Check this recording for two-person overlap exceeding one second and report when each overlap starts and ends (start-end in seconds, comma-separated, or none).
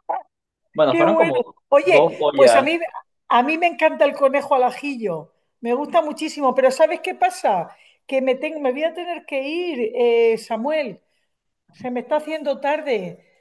0.9-2.7